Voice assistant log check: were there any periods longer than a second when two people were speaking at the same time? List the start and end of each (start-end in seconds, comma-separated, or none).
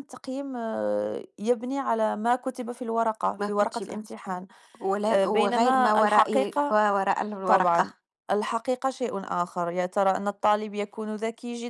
5.1-6.7